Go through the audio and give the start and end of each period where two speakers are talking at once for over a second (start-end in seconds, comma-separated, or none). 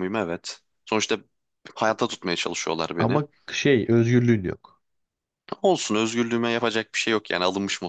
none